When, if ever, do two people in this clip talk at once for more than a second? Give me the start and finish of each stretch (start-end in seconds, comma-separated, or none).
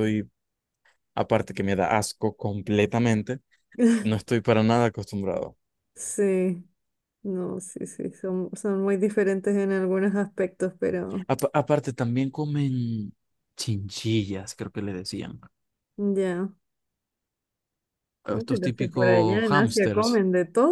18.3-20.2